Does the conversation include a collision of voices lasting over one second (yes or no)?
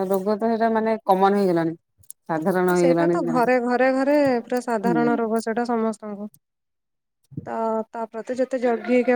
no